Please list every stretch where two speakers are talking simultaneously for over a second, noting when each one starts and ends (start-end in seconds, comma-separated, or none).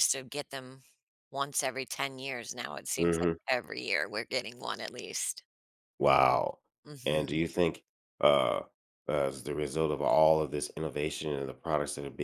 none